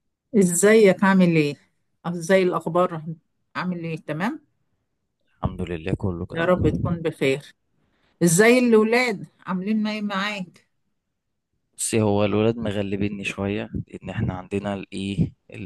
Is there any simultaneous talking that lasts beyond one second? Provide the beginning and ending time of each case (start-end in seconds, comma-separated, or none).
none